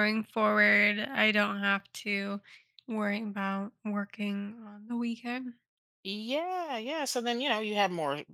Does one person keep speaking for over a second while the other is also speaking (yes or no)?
no